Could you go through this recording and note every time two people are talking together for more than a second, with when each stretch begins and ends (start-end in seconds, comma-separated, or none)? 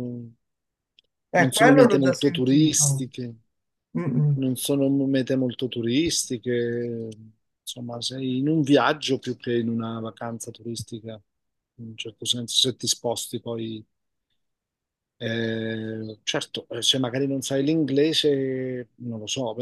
1.4-3.1